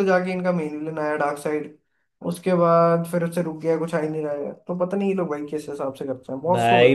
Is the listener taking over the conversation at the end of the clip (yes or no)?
yes